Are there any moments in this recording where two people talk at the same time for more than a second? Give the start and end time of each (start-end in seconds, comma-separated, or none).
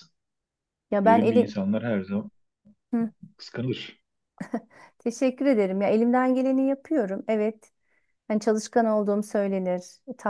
none